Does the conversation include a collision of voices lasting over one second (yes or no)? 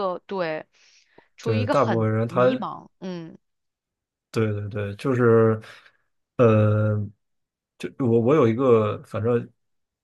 yes